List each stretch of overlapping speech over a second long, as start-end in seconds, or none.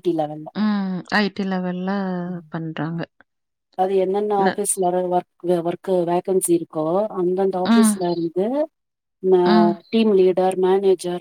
none